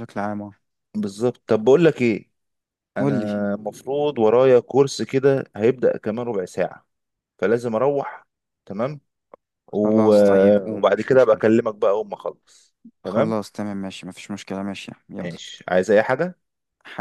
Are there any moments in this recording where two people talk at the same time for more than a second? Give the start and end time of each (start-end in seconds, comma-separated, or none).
9.8-11.5